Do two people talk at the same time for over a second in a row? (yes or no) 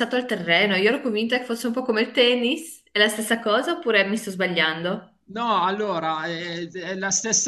no